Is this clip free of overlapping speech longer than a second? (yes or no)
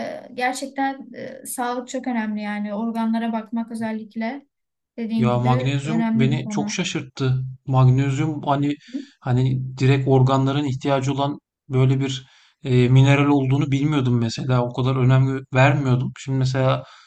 no